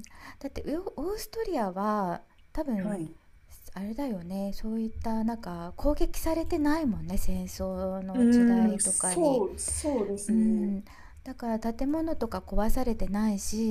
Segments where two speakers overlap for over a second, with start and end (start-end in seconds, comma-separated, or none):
8.1-9.4